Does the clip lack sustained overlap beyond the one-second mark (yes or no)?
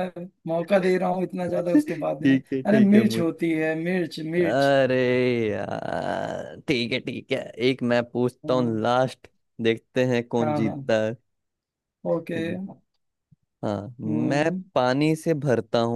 no